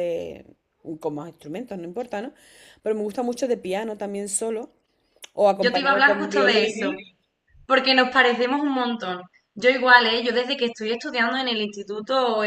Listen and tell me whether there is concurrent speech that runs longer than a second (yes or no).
yes